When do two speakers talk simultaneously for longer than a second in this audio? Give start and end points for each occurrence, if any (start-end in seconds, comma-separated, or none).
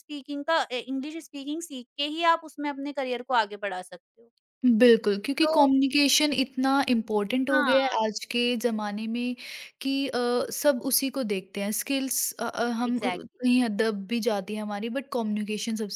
none